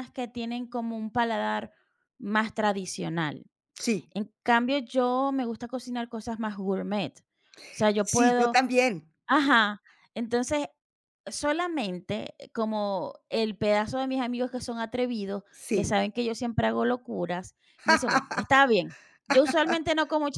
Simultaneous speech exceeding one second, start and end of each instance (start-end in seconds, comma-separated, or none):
none